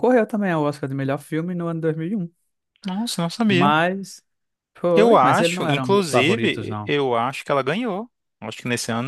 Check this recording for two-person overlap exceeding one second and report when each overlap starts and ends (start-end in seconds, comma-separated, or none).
4.9-7.0